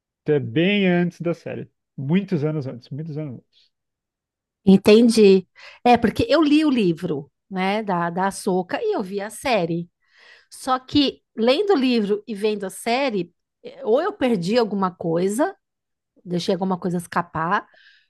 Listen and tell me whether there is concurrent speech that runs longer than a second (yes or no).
no